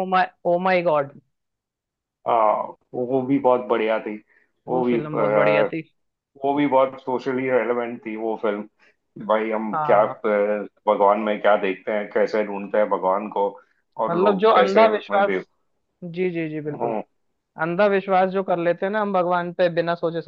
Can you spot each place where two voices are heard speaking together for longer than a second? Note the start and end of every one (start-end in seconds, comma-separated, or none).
14.1-15.4